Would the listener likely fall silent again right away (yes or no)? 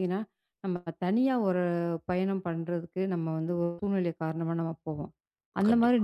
yes